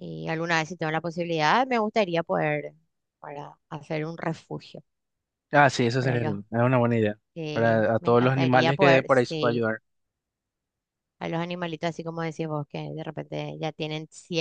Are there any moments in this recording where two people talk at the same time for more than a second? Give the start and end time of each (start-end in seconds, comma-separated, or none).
7.3-9.7